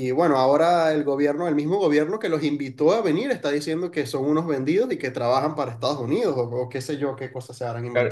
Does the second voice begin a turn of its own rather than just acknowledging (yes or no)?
yes